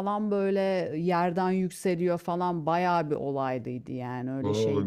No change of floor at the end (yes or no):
no